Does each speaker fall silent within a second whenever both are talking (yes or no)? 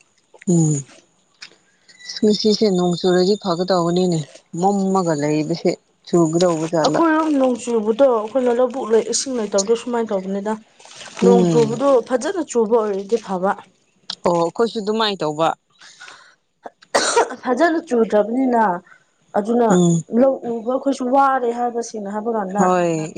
yes